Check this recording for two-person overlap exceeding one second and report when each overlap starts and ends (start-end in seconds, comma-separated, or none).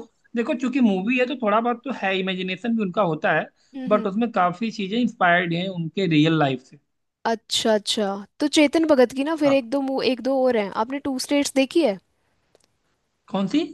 none